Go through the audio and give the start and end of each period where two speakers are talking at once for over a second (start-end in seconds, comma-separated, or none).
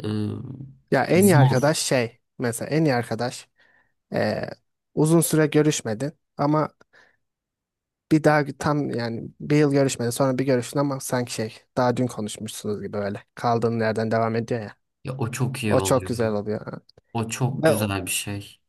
none